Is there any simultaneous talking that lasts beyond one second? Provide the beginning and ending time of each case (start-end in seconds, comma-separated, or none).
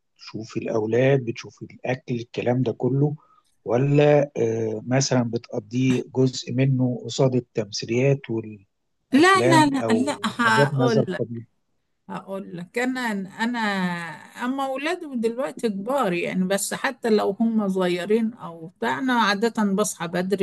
9.1-11.0